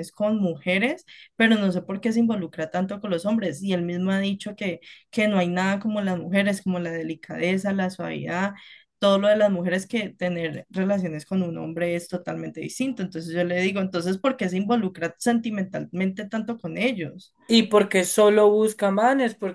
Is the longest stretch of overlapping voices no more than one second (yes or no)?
yes